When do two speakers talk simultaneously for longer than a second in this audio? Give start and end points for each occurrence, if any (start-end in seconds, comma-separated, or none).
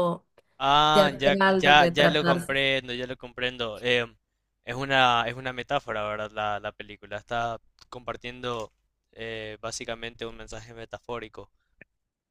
0.9-2.6